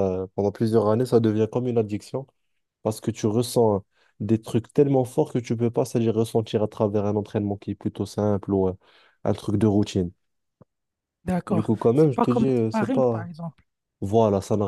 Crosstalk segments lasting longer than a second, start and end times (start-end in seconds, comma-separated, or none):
11.5-13.3